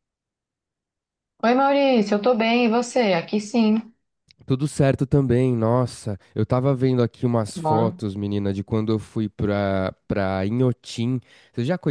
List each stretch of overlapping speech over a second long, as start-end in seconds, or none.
none